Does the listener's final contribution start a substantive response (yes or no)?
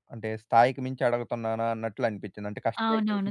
yes